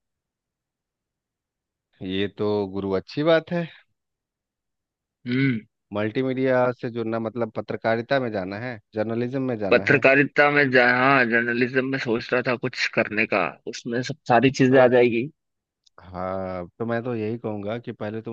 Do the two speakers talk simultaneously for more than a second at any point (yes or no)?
no